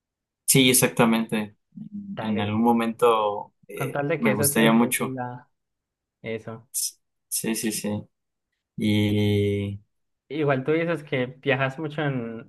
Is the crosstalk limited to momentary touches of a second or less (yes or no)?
no